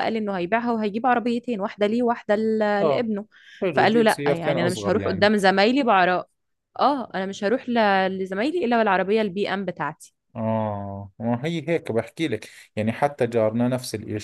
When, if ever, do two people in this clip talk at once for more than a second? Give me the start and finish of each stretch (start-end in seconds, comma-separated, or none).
3.7-5.3